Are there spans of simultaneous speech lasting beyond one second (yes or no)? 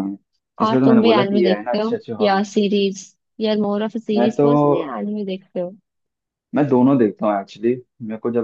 yes